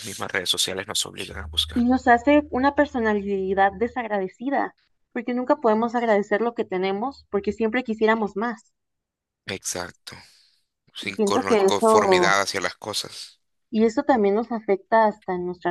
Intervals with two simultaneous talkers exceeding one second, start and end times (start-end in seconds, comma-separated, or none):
11.0-12.4